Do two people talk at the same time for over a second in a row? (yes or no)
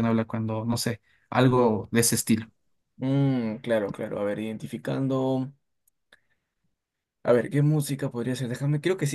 no